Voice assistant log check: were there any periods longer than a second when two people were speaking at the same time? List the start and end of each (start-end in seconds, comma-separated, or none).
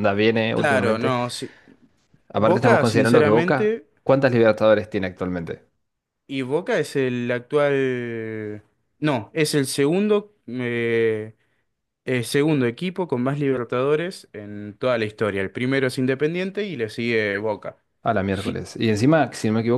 2.4-3.9